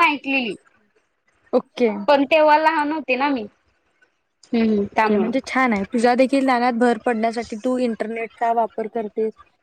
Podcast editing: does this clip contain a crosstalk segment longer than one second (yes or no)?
no